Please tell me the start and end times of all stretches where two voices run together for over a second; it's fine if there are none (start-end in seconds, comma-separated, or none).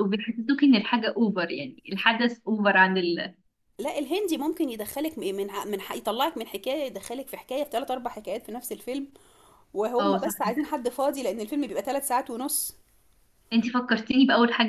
none